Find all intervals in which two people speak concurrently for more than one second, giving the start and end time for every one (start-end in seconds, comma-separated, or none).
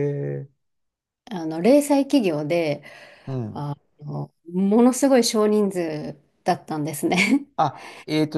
none